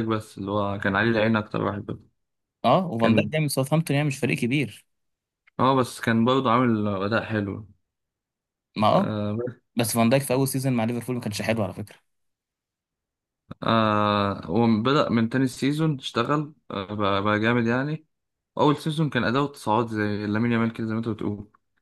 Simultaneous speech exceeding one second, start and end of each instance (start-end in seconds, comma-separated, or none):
none